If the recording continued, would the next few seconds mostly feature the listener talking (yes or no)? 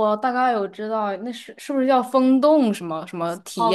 yes